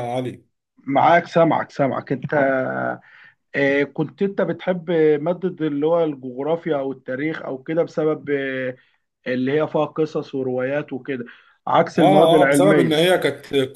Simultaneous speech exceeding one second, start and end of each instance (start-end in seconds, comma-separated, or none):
12.0-13.2